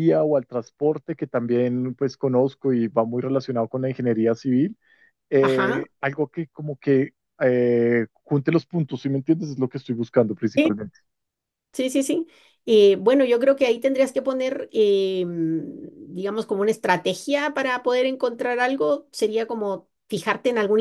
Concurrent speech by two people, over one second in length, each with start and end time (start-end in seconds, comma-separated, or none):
none